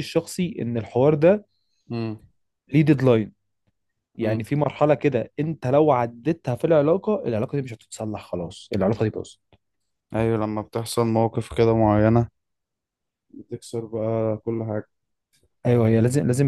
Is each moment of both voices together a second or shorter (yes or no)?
yes